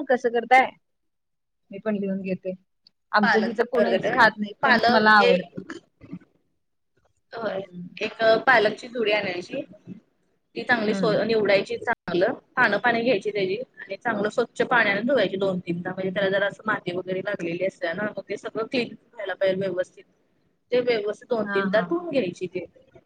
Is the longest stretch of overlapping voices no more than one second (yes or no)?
no